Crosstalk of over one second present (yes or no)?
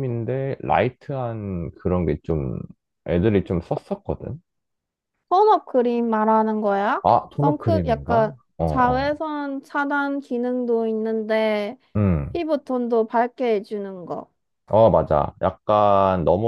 yes